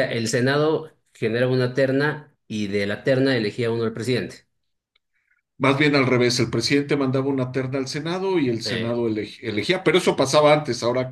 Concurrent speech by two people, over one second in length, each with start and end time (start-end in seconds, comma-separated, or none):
none